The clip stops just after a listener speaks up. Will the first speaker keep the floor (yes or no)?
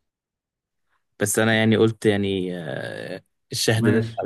yes